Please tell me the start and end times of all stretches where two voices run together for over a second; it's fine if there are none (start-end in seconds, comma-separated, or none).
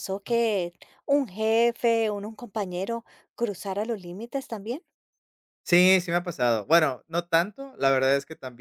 none